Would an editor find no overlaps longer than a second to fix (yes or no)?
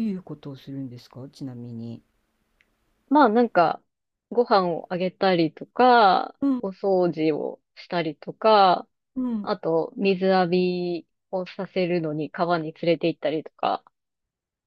yes